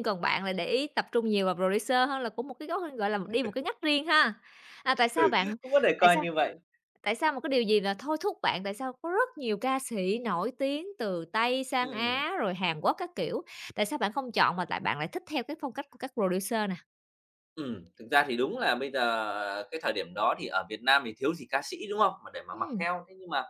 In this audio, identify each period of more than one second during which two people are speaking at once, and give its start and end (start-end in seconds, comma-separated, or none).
none